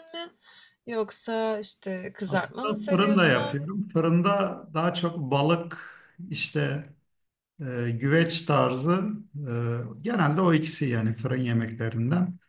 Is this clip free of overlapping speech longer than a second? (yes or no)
no